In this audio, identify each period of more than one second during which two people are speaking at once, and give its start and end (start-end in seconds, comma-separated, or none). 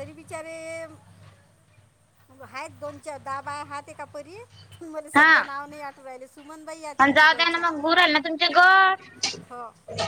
none